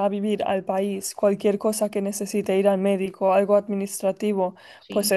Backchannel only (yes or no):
yes